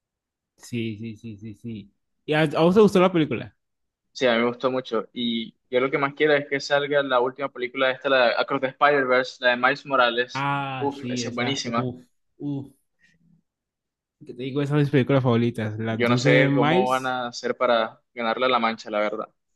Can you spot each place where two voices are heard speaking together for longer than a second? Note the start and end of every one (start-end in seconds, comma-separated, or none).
10.3-11.9, 15.9-17.2